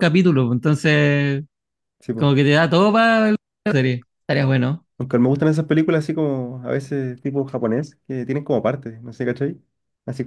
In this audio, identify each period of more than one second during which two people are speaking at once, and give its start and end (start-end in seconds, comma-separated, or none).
none